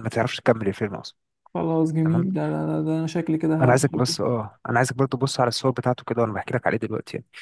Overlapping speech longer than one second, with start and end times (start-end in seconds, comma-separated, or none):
none